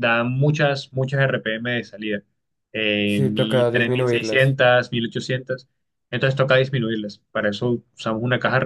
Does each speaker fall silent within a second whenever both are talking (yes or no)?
no